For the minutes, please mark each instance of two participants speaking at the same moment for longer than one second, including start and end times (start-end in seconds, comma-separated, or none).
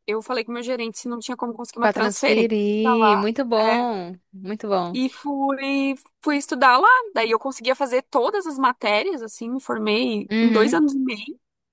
1.8-3.9